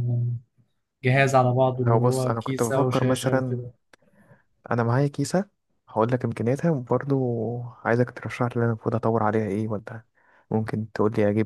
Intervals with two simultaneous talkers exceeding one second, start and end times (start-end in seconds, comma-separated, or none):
1.9-3.6